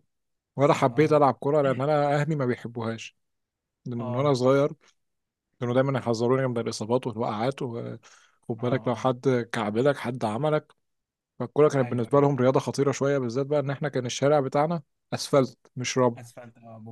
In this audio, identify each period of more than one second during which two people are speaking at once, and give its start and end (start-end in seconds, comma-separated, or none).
none